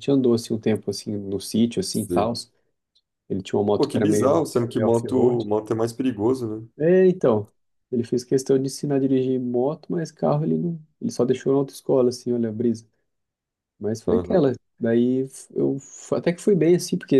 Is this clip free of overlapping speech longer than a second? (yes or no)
no